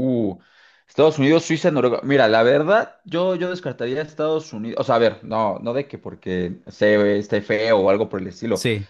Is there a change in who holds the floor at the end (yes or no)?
no